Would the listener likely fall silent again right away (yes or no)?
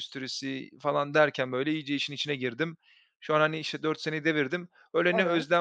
yes